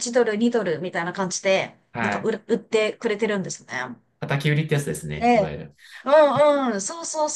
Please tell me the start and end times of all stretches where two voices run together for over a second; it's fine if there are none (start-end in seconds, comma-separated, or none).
none